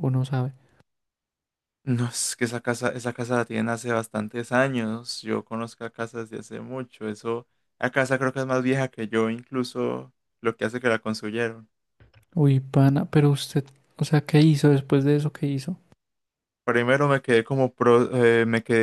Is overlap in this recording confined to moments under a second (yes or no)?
yes